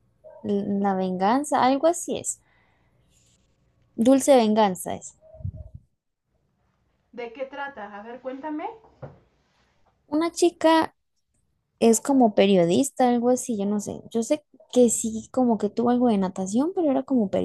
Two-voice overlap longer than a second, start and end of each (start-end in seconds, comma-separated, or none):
none